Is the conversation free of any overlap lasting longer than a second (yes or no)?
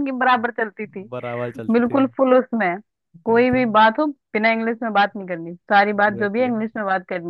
yes